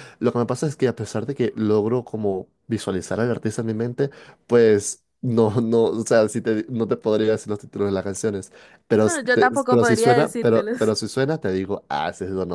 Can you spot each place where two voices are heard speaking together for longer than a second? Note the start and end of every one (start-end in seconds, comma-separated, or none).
8.9-10.7